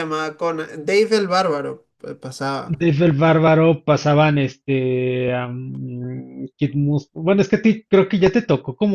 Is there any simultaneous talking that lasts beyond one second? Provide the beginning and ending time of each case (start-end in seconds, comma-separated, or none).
none